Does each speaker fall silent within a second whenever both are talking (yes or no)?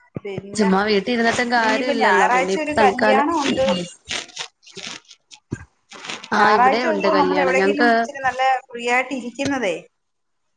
no